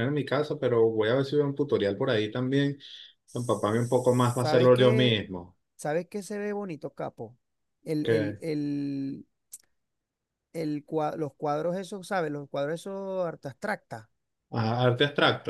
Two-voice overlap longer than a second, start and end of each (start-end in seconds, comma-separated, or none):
3.3-5.2